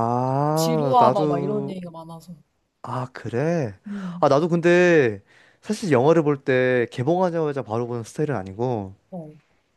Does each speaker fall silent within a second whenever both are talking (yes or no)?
no